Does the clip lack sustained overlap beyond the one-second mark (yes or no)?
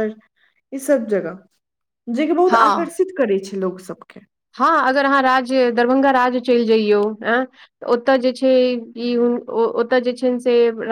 yes